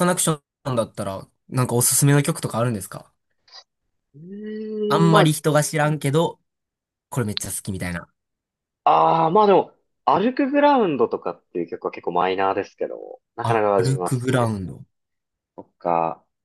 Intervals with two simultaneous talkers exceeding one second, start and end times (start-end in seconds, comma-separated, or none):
13.4-14.7